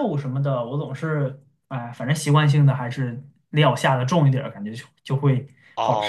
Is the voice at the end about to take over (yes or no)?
yes